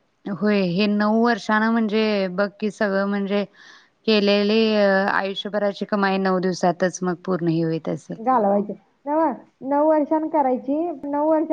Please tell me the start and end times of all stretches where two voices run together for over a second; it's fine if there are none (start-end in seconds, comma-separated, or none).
none